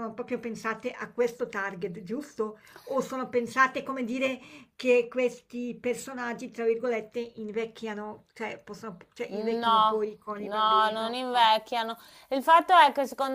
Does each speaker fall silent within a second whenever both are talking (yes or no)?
no